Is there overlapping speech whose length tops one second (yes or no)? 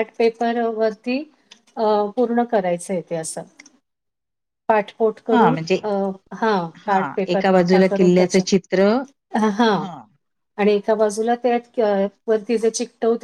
yes